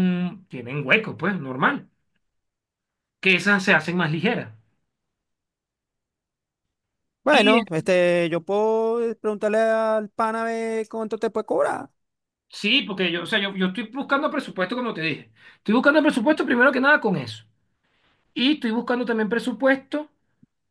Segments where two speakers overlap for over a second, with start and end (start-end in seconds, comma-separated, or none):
none